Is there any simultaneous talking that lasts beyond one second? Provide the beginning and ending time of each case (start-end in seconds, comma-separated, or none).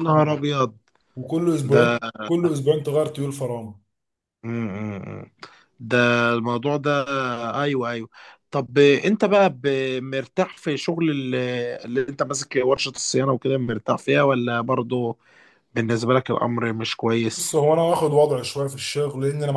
none